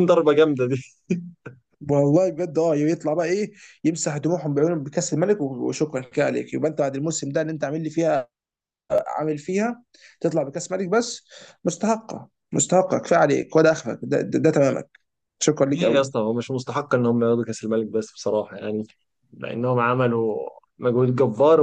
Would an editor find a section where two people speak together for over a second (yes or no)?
no